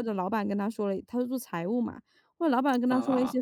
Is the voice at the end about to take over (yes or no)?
no